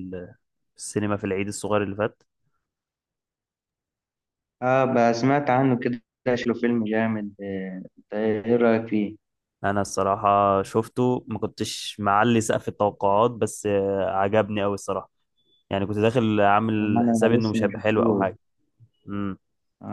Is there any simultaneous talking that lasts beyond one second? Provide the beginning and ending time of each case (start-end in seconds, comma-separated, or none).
16.8-18.2